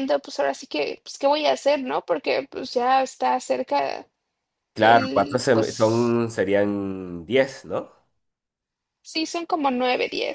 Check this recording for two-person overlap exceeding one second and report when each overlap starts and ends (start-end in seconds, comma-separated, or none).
4.8-6.2